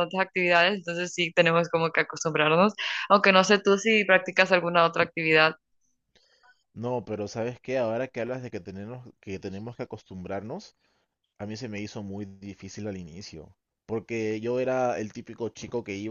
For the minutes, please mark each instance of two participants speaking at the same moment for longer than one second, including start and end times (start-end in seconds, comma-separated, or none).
none